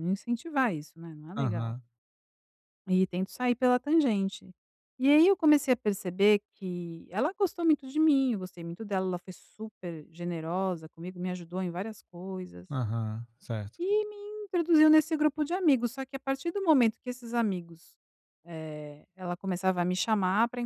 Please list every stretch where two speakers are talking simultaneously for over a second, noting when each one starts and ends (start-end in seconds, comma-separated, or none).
none